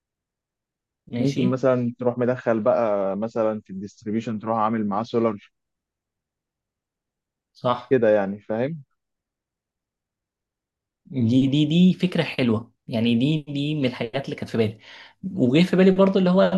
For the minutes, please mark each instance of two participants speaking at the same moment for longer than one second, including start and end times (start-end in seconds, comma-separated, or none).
none